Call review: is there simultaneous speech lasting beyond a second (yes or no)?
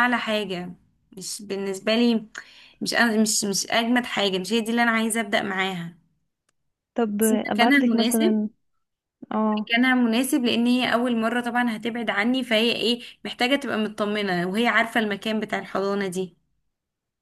yes